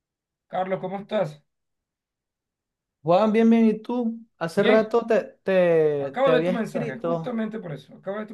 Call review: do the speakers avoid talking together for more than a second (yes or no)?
no